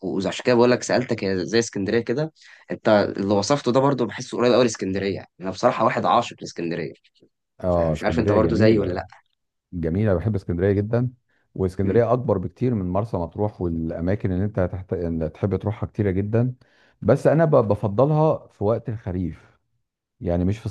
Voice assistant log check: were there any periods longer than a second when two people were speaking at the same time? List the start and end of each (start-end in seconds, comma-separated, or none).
7.7-9.1